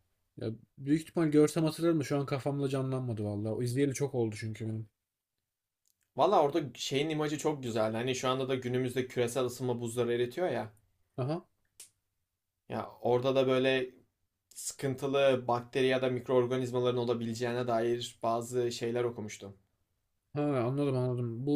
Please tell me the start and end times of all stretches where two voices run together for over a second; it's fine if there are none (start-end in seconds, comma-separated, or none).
none